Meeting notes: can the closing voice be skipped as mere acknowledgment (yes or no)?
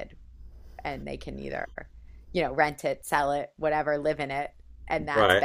yes